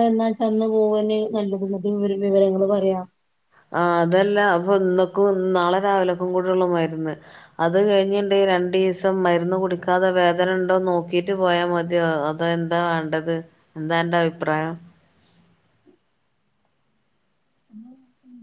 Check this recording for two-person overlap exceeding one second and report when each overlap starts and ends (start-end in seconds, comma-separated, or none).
none